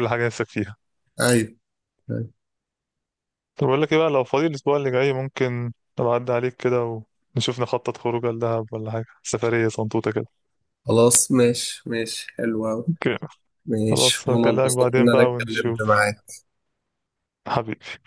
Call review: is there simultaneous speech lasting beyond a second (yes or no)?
yes